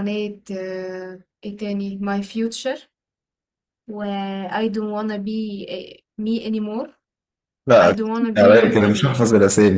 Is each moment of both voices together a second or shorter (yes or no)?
no